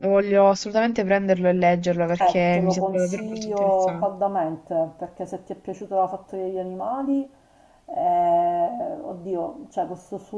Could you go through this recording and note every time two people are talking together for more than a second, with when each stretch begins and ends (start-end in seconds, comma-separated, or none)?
2.1-4.2